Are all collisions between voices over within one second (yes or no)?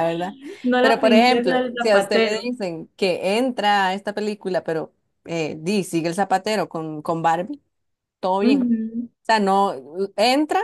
no